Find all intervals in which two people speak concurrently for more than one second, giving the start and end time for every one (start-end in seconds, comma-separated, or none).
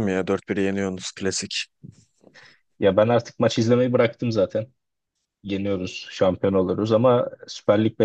none